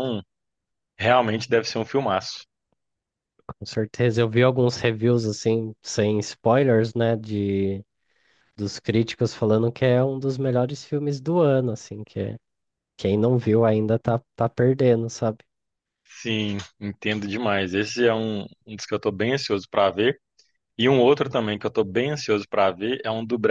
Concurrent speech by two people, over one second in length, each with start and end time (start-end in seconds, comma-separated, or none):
none